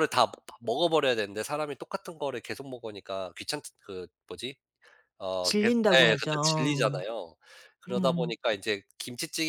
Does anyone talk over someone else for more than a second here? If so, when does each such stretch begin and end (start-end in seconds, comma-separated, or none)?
5.4-7.0